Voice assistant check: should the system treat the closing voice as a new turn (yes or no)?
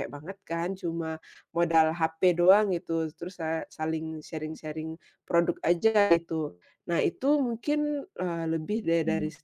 no